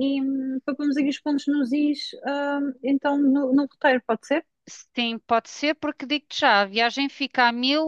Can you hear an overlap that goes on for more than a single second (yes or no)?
no